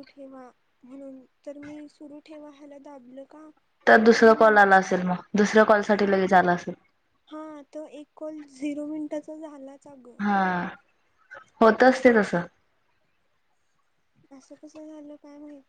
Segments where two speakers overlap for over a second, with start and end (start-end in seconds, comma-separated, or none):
none